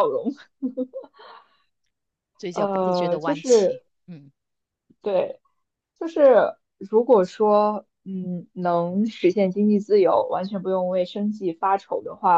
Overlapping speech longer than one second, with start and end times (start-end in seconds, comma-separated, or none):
2.5-3.8